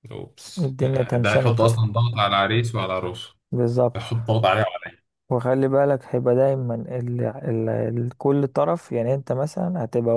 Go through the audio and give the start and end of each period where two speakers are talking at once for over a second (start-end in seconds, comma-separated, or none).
0.6-1.9